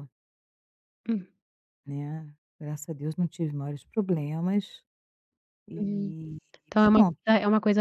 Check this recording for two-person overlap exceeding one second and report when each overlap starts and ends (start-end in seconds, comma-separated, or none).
none